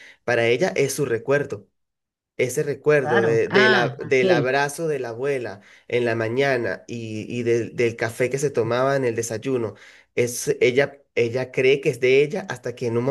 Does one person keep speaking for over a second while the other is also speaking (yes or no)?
yes